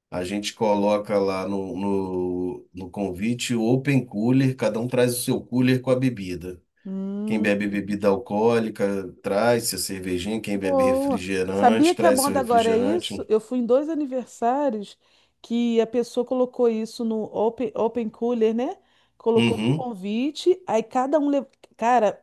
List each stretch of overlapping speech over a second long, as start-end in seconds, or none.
10.5-13.3